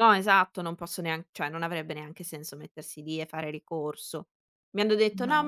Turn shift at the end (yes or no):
no